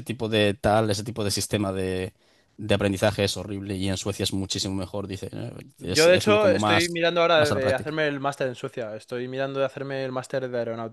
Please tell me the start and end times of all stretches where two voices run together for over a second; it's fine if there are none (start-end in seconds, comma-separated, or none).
5.8-8.0